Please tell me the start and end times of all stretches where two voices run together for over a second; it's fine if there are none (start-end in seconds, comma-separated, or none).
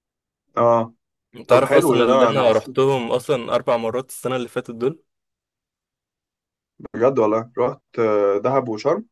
1.4-2.7